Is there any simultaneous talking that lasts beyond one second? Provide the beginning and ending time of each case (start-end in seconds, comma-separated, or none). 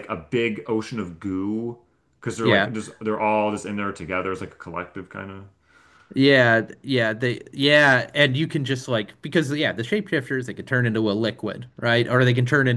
none